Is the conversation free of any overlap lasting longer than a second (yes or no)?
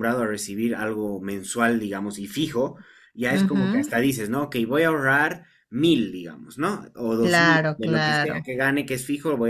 no